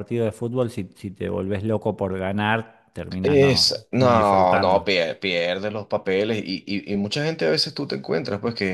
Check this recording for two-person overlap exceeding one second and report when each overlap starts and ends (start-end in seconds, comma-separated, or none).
3.2-4.9